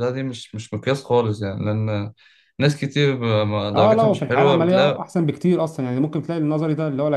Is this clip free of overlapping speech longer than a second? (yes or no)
no